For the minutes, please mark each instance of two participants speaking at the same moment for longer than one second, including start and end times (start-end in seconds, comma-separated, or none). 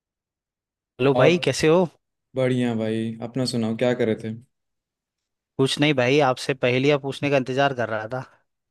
none